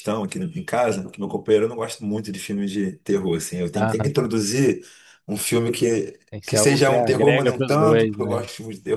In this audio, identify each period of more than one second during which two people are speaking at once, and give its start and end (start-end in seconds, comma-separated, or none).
6.3-8.4